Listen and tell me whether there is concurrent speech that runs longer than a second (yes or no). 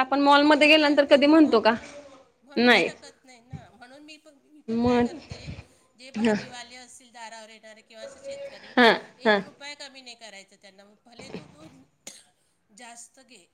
no